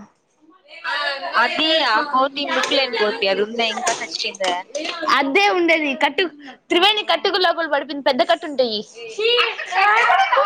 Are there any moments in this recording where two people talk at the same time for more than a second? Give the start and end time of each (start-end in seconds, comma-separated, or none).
none